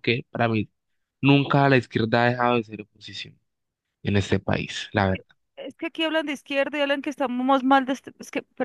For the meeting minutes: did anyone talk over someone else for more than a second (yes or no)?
no